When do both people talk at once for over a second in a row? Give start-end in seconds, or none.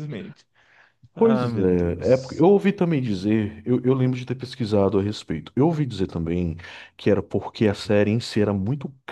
1.2-2.5